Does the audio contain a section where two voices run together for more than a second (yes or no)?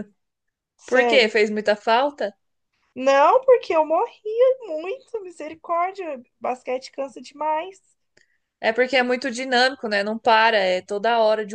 no